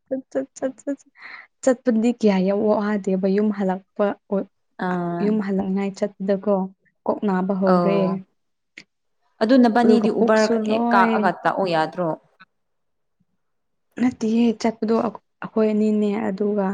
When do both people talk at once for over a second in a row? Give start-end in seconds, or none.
9.8-11.3